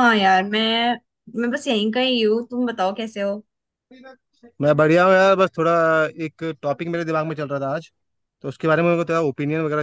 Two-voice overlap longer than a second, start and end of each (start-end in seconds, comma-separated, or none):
none